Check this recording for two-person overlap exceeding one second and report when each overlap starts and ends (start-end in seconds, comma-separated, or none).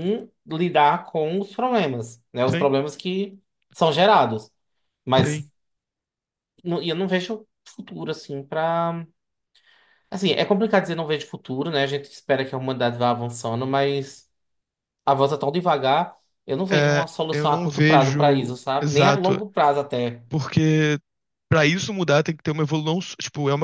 16.7-19.4